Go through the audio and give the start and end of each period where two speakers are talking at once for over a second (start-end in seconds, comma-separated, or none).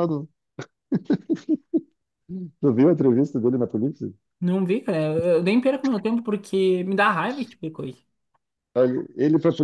none